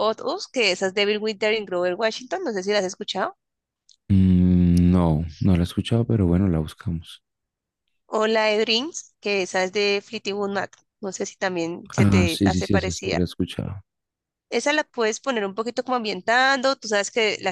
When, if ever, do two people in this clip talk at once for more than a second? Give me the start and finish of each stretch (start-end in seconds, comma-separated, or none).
12.0-13.2